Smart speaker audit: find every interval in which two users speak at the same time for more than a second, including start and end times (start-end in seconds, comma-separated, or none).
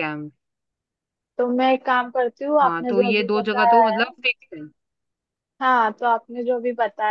2.6-4.1